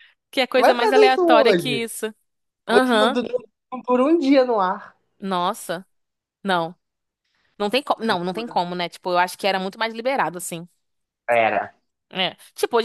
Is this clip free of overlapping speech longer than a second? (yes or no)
no